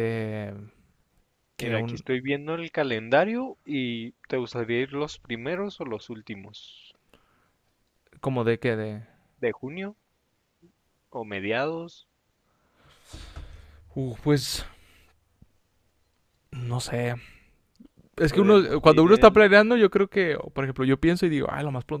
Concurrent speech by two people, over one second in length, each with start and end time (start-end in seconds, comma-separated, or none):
18.3-19.5